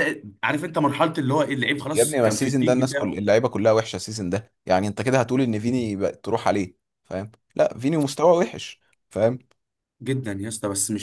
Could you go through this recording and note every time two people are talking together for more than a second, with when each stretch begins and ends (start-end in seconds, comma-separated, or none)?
1.9-3.2